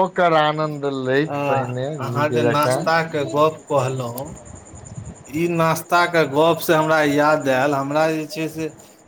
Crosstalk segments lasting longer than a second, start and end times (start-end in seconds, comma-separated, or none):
none